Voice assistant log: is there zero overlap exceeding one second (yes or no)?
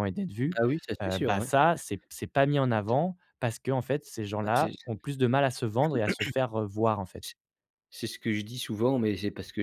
yes